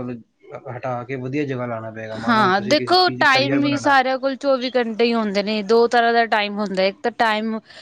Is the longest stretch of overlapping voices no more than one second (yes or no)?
no